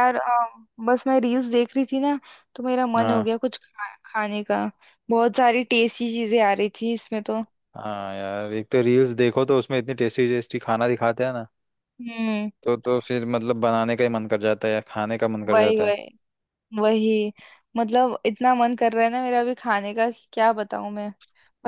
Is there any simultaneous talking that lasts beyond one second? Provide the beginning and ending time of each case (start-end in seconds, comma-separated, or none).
none